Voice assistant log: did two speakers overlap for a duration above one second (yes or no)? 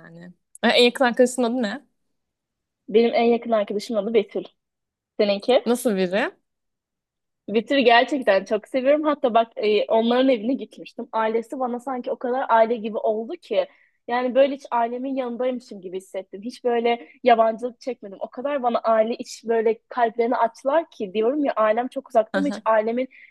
no